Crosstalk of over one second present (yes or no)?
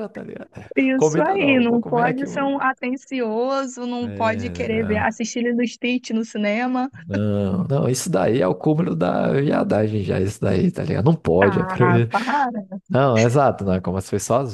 yes